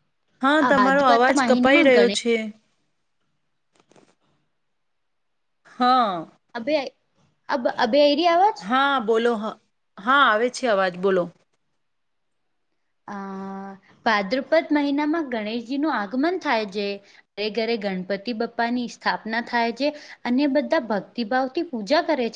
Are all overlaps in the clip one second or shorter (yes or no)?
no